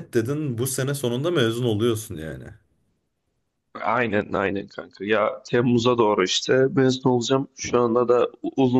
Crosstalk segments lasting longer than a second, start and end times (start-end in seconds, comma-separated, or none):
none